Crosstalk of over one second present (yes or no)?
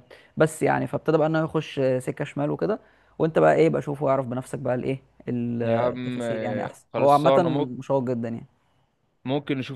yes